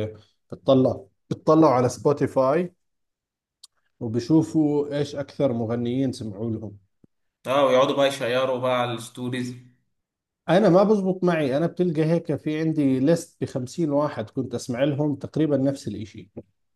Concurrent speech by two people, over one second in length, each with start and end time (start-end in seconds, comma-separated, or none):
none